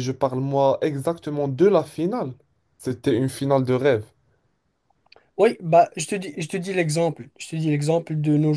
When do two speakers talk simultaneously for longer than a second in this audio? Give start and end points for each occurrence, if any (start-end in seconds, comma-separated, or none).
none